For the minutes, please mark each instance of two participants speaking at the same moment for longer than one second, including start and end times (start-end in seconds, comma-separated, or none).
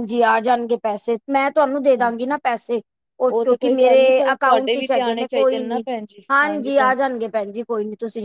3.5-5.8